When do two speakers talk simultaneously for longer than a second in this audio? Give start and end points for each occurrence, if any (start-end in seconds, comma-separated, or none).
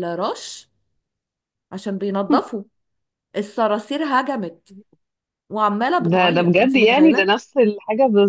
6.0-7.3